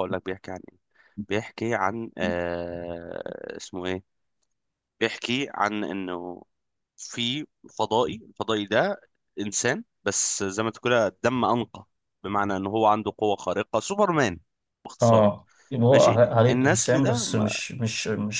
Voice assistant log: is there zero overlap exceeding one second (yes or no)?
no